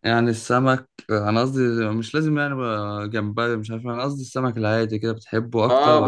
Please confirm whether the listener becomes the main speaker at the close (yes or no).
yes